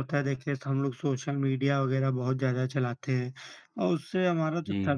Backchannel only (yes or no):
yes